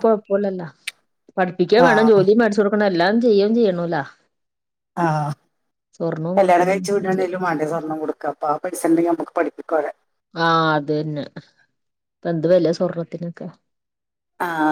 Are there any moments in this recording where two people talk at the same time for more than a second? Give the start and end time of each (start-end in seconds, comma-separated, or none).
none